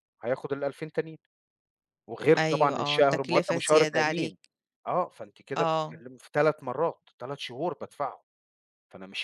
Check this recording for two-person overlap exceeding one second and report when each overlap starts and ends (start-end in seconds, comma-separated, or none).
2.4-4.4